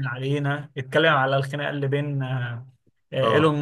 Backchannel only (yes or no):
yes